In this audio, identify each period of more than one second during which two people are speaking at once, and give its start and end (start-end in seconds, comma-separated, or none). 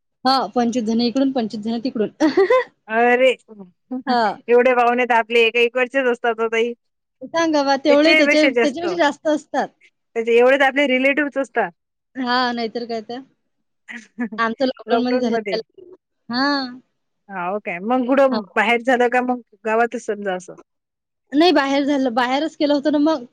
7.2-9.7